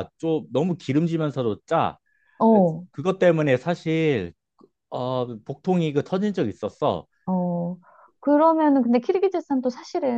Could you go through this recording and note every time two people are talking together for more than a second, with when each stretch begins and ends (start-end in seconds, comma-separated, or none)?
none